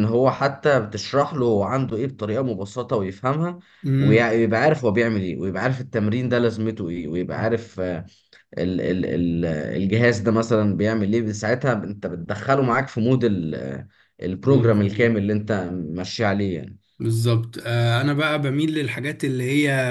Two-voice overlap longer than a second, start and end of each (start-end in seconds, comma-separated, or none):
none